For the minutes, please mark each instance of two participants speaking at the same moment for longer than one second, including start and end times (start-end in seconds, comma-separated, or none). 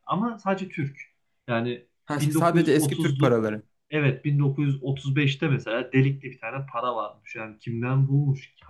2.0-3.4